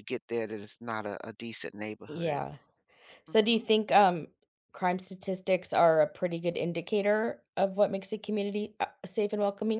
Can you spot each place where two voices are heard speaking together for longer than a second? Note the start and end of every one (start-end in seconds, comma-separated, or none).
none